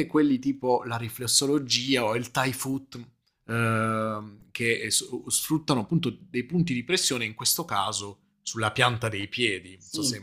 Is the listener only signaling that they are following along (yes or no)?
no